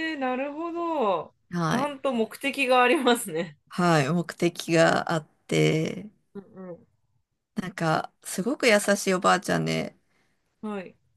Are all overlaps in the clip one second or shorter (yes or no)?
yes